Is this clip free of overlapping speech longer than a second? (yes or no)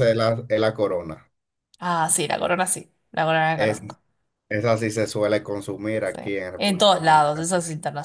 no